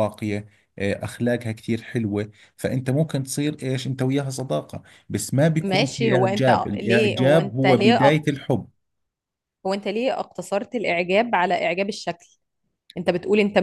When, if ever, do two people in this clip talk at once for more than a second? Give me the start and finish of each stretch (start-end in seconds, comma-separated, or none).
5.6-8.2